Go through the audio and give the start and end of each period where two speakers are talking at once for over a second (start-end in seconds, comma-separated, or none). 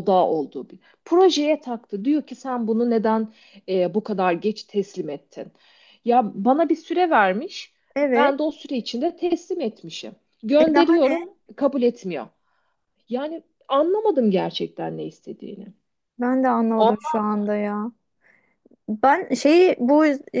none